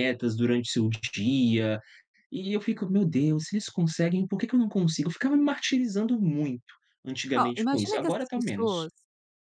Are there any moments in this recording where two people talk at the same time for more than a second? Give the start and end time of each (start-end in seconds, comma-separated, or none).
7.3-8.9